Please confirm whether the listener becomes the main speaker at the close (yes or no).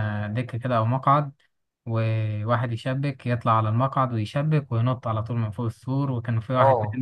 yes